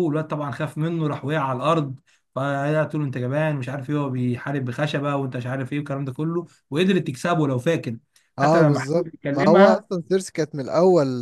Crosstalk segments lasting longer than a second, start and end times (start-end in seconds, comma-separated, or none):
8.4-9.9